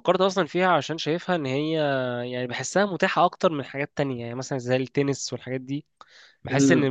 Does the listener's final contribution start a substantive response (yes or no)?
no